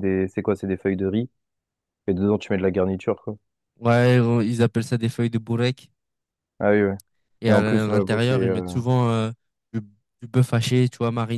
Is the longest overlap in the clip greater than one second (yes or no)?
yes